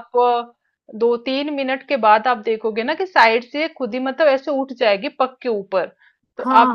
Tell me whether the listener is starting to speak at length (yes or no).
yes